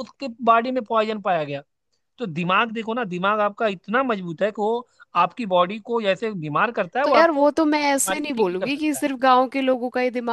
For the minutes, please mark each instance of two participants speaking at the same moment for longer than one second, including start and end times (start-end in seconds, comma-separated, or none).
7.0-9.1